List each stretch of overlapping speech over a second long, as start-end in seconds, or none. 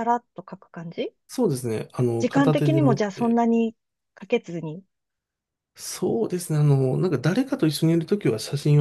2.2-3.4